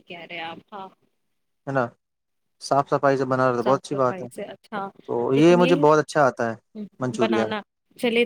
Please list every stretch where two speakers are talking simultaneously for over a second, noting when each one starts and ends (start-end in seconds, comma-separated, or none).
none